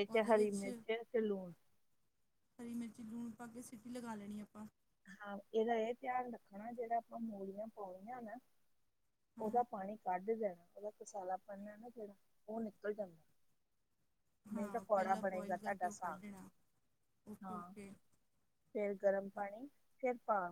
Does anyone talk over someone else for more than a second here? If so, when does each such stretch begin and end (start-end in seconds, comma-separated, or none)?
14.5-16.2